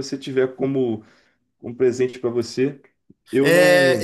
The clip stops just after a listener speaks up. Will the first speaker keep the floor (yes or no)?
no